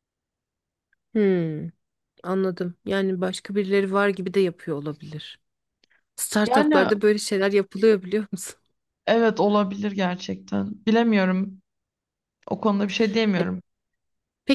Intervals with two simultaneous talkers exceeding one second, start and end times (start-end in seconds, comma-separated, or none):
none